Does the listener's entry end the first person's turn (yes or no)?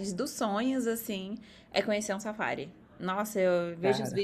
no